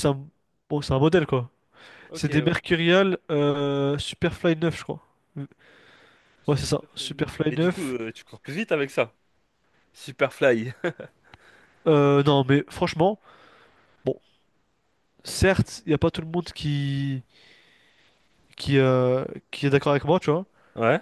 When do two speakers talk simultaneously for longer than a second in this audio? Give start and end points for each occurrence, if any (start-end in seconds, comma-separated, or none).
6.5-7.9